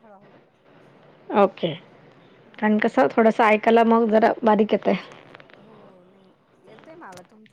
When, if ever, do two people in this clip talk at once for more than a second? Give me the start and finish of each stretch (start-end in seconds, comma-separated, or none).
none